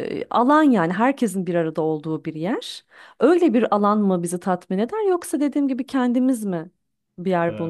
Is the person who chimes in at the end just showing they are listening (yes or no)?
no